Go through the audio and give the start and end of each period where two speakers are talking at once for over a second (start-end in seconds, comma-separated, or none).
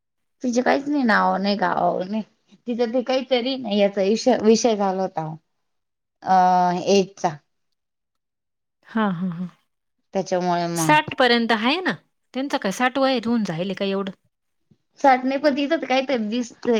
none